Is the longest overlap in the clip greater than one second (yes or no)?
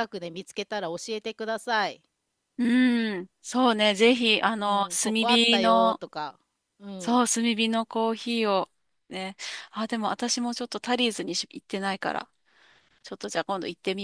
yes